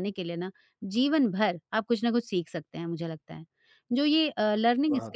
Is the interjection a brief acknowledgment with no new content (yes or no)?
yes